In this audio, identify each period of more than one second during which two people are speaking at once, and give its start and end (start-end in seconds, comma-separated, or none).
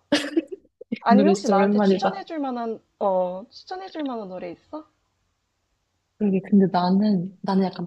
1.0-2.2